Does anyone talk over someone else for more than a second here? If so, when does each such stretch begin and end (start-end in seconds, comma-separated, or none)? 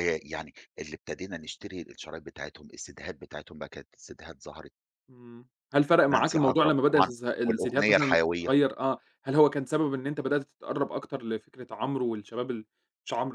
6.1-8.5